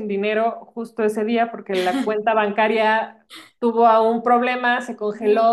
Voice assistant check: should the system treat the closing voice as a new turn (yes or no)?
no